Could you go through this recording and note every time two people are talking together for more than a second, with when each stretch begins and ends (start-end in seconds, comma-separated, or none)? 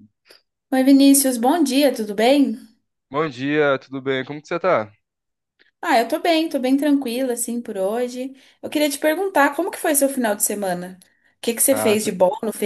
none